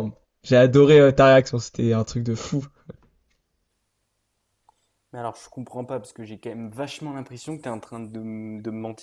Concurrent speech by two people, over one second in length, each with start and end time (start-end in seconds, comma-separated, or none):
none